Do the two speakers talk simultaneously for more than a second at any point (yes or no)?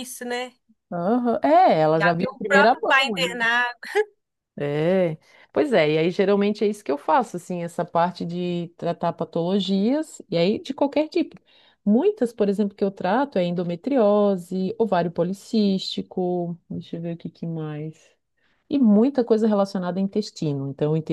yes